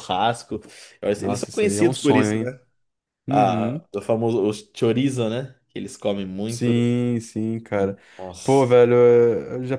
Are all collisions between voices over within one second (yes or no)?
no